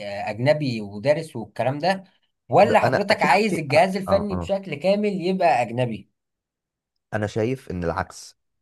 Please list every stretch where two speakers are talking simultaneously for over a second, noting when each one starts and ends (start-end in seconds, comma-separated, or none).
2.6-4.5